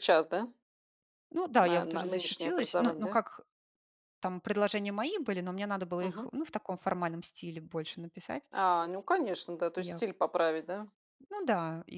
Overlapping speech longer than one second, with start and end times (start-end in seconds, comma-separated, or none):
1.6-3.2